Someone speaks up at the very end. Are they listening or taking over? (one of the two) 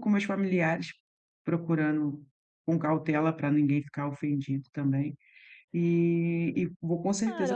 taking over